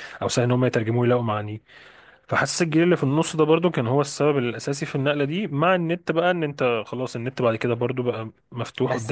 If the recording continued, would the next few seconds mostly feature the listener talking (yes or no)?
yes